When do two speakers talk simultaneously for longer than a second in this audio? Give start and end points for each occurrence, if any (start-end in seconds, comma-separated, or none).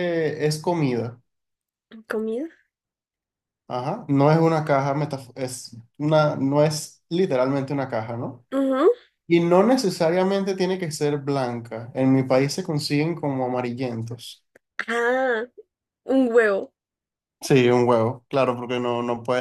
none